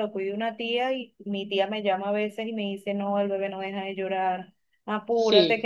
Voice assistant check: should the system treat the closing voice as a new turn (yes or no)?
no